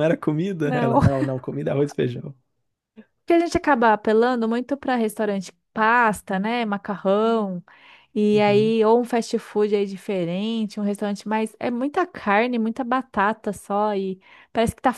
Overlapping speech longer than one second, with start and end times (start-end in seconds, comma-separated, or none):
none